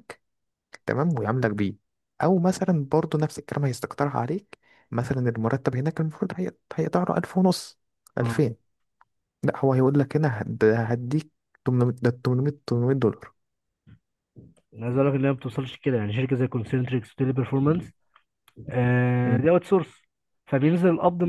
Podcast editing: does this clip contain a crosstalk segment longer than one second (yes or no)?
no